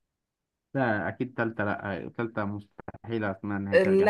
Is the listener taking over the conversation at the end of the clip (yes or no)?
yes